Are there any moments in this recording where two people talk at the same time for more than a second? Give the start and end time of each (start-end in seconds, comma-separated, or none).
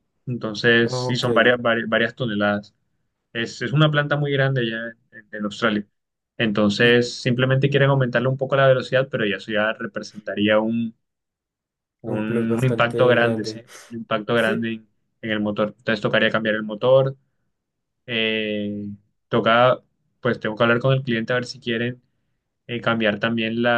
12.1-13.6